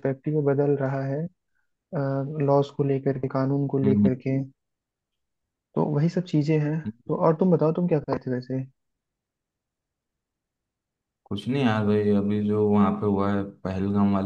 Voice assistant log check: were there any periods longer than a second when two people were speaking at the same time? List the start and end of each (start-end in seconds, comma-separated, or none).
none